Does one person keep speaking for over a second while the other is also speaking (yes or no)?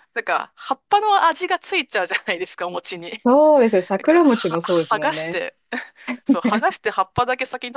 yes